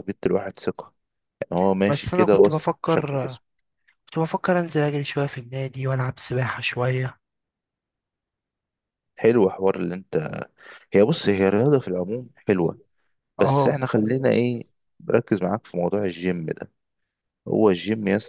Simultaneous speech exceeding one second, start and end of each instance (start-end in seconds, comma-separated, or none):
1.9-3.3